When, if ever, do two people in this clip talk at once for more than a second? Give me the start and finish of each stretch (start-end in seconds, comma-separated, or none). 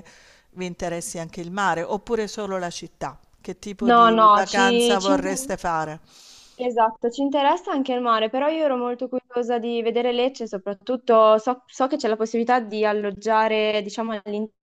3.8-5.5